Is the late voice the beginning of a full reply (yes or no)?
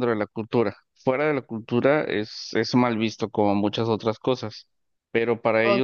no